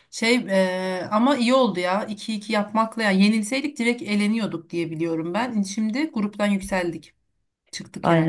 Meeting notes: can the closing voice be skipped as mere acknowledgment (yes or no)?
no